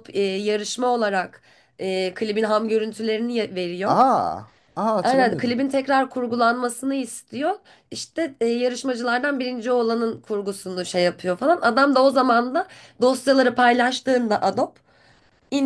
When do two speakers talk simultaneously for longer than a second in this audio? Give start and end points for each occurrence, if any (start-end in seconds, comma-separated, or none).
none